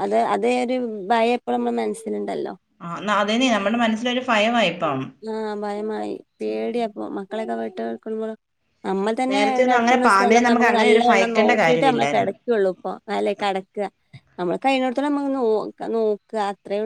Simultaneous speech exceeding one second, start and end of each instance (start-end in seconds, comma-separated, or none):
9.3-12.3